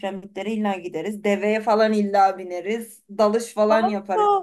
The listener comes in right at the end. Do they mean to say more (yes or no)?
yes